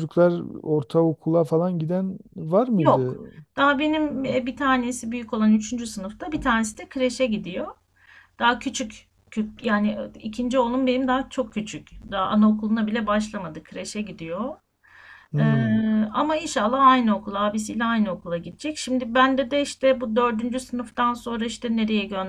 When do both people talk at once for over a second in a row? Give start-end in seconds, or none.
none